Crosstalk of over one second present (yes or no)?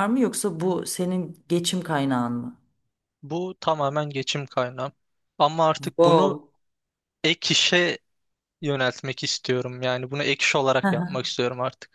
no